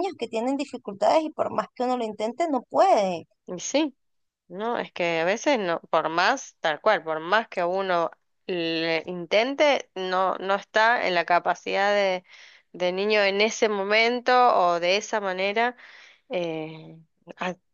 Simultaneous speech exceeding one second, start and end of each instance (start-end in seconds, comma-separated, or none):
none